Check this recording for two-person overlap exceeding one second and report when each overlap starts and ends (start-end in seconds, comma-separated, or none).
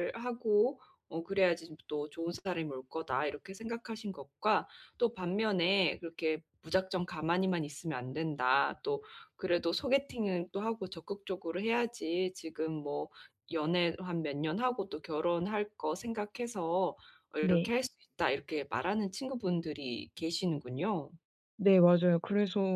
none